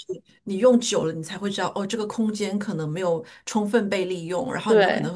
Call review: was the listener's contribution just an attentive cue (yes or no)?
yes